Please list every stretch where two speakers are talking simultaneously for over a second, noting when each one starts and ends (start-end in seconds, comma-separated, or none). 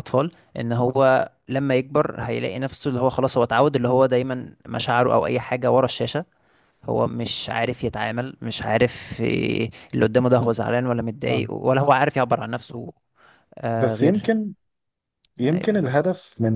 none